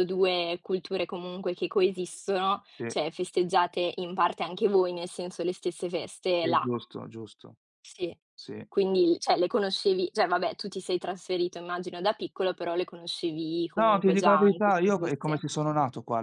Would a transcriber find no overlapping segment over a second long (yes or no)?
no